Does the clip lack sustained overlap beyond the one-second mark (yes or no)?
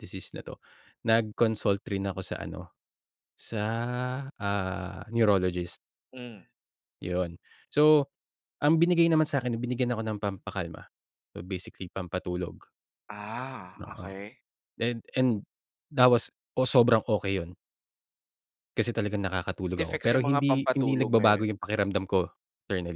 no